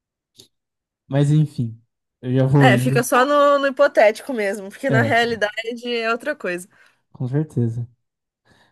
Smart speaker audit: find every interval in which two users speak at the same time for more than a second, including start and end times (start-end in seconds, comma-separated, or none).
none